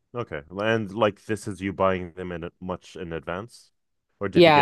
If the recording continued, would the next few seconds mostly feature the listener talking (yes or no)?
yes